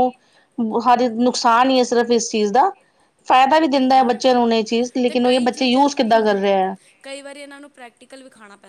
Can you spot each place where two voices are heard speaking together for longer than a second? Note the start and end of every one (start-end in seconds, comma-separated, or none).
5.0-6.6